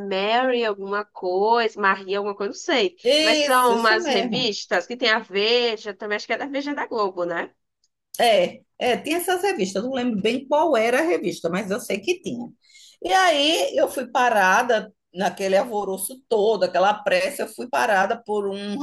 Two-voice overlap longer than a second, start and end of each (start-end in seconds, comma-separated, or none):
3.0-4.5